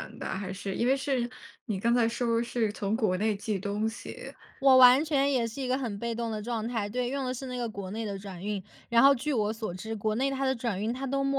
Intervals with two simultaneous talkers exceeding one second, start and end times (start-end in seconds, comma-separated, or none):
none